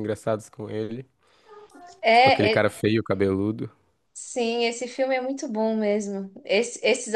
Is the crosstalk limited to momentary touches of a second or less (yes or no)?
yes